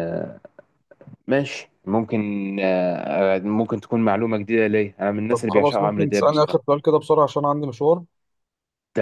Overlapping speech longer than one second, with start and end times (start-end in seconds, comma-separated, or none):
5.3-6.6